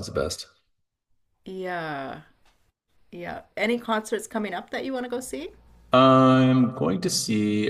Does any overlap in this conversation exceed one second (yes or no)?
no